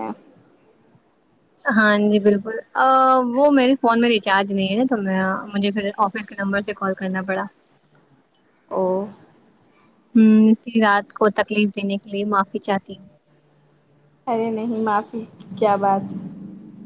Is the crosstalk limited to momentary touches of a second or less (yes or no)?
yes